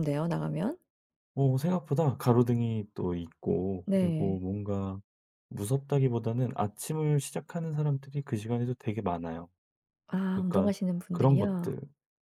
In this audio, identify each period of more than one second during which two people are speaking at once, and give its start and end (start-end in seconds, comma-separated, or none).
10.3-11.7